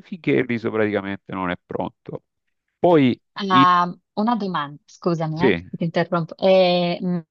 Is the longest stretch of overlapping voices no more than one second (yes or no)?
yes